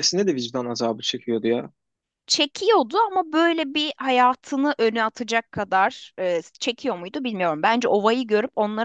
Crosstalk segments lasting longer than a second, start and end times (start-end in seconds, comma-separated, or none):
none